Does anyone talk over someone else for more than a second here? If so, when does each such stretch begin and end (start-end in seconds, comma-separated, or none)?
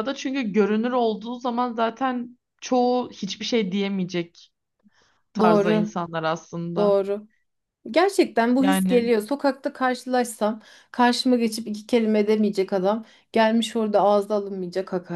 none